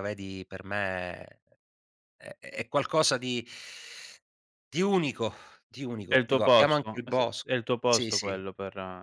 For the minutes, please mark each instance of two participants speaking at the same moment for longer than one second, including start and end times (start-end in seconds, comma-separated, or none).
6.1-8.4